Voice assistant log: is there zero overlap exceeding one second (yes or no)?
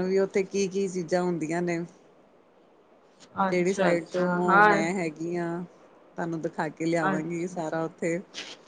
no